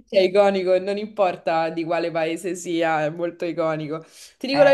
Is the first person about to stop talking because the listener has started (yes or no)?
no